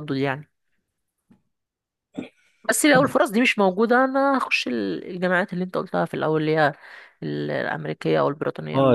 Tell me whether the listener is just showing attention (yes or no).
no